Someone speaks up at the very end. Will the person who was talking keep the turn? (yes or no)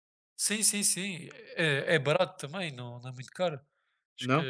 yes